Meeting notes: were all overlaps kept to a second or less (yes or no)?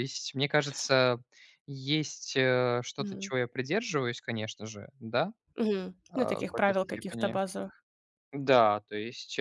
no